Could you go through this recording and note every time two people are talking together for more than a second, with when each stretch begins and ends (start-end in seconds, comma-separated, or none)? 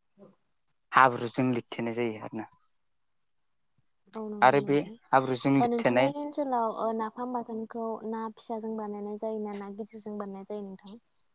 4.5-6.1